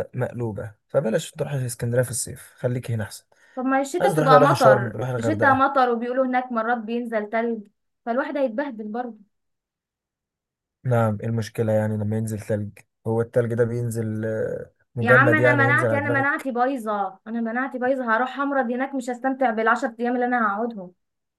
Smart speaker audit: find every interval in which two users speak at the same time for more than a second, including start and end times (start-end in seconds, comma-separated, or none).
4.0-5.6, 15.0-16.5